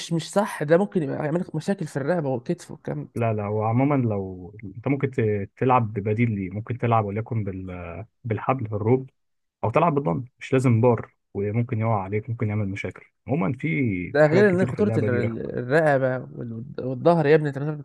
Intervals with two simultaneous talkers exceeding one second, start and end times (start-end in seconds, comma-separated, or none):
14.2-15.6